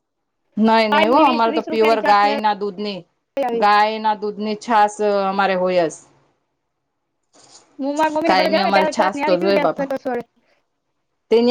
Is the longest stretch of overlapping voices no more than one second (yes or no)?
no